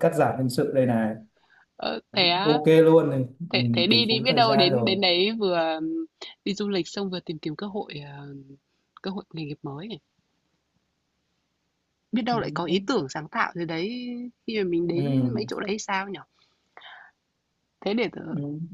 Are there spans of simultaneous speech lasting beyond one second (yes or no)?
yes